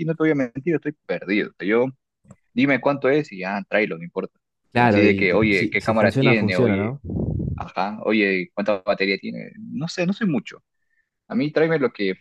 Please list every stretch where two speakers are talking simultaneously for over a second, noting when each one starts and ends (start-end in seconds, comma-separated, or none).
4.7-7.0